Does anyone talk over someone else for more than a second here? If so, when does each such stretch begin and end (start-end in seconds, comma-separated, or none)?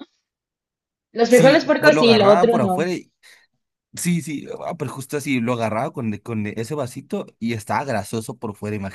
1.3-2.9